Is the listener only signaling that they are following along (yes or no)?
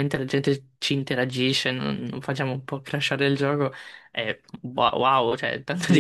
no